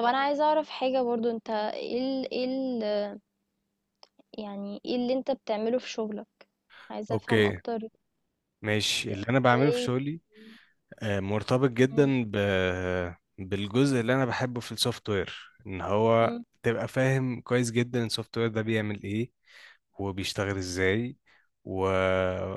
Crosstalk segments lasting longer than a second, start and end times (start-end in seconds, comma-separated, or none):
none